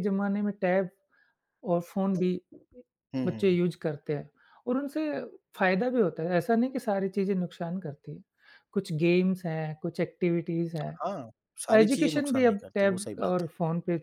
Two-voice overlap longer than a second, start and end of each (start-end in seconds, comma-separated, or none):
11.7-13.5